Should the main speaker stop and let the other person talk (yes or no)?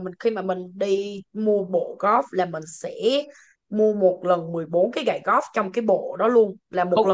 yes